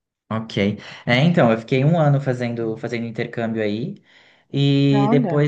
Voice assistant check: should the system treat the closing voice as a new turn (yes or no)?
no